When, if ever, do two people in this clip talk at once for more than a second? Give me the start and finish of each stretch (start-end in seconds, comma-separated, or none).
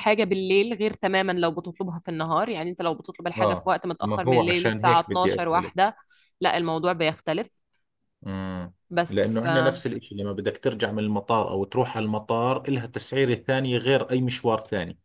3.4-5.9